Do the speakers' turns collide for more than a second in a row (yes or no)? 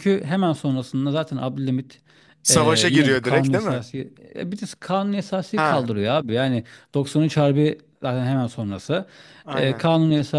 yes